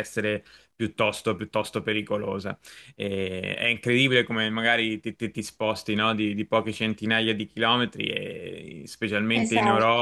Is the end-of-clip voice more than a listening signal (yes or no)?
no